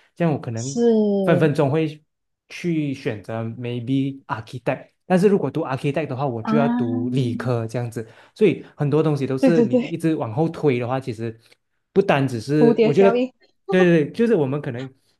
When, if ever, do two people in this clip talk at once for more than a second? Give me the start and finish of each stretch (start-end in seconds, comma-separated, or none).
none